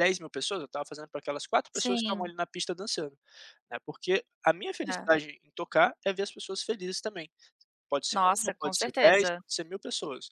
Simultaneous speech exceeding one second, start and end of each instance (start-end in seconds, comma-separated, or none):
8.1-9.4